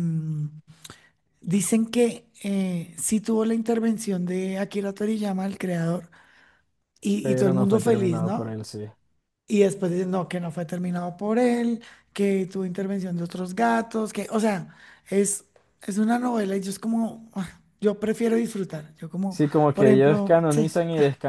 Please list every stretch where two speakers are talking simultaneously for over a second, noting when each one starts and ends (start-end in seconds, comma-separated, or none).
7.2-8.6, 19.3-20.7